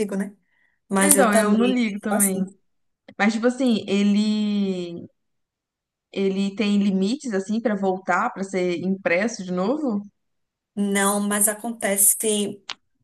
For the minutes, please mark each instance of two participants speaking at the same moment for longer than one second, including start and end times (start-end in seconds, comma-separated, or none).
1.0-2.4